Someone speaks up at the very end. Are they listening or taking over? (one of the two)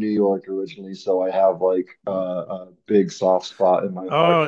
taking over